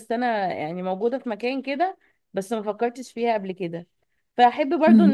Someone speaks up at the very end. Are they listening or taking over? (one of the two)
listening